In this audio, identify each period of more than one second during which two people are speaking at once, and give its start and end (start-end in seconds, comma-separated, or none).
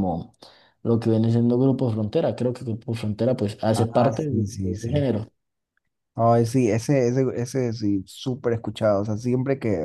3.8-5.1